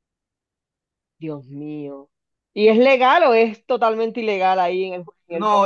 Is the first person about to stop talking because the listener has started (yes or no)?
yes